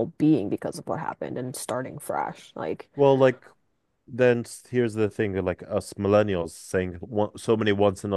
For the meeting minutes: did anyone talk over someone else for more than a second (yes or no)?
no